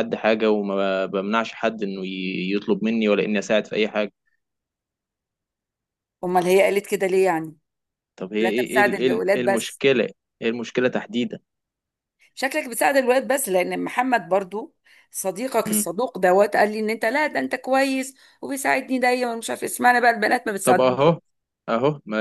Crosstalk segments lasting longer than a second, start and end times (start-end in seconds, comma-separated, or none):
8.4-9.8